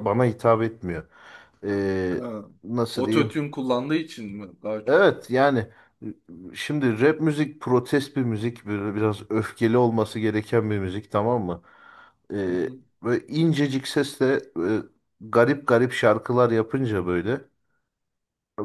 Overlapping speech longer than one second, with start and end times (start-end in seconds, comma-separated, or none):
none